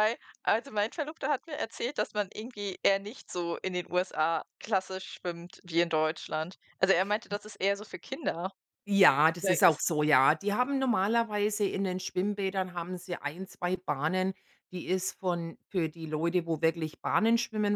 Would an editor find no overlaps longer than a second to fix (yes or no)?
yes